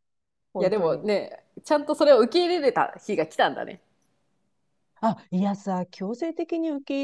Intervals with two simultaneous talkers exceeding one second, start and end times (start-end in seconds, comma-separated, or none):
none